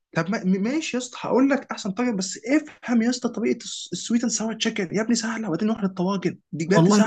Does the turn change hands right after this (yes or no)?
yes